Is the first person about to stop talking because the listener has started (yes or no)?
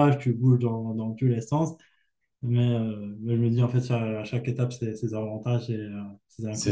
yes